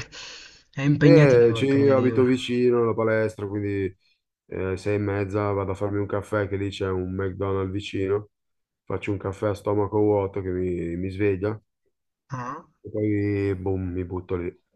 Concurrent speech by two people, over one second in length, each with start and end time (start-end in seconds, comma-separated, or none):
1.0-2.3